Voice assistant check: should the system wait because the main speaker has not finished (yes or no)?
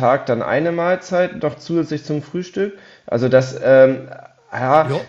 yes